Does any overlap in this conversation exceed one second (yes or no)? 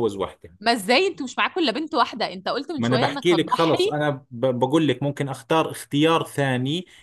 yes